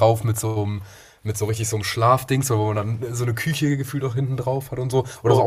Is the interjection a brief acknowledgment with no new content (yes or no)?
yes